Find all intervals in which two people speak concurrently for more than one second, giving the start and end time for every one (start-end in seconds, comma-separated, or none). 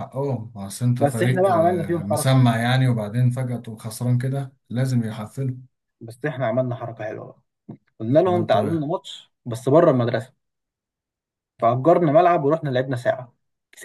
1.0-2.5